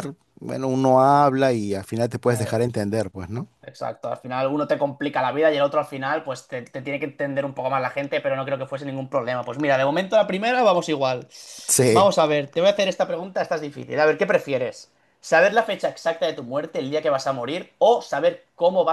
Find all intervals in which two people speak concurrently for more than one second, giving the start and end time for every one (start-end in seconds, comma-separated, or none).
none